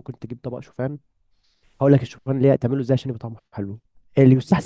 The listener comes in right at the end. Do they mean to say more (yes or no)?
no